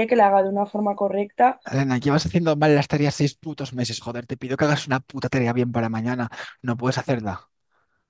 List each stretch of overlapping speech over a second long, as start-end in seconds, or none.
none